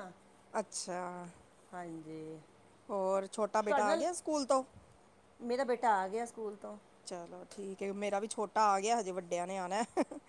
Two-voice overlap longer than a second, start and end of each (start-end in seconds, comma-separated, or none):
none